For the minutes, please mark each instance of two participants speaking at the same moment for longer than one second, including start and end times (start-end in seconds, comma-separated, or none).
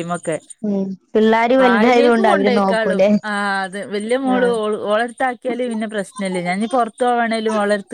1.6-3.1